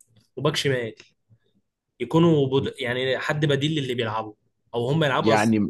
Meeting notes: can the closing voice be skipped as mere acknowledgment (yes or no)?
no